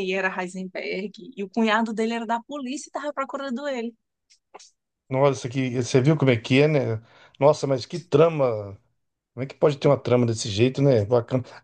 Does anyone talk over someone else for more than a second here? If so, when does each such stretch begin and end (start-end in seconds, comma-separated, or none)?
none